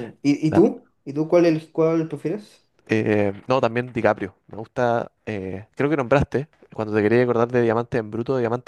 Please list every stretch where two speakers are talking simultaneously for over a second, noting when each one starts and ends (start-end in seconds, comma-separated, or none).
none